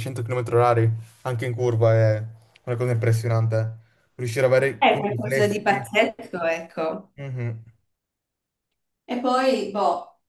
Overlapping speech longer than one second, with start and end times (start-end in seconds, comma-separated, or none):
4.8-6.0